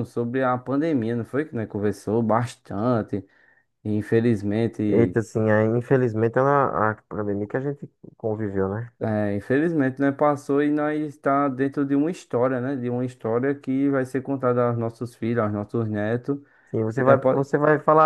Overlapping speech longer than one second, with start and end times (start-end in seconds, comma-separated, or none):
none